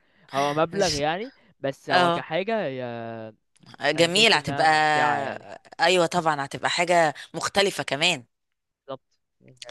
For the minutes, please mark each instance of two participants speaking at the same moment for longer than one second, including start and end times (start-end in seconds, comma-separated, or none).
4.0-5.5